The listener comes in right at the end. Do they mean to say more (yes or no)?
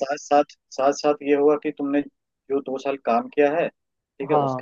no